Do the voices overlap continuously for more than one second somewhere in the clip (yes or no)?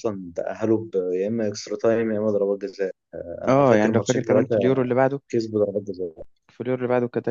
yes